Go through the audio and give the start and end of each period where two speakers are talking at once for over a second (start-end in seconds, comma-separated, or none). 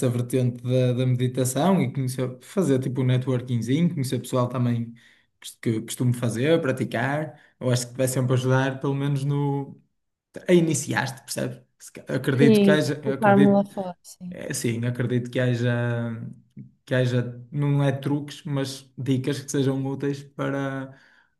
12.4-13.7